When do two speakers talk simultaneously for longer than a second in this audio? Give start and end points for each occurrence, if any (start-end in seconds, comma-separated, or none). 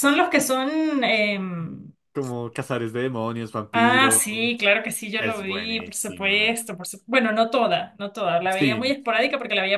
5.2-6.6